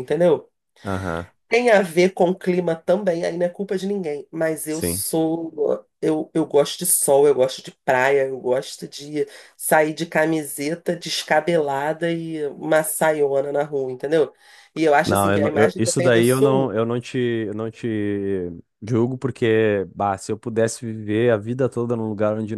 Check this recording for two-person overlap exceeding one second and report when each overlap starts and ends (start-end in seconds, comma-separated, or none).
15.0-16.7